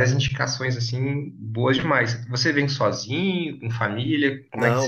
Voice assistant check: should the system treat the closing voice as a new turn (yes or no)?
yes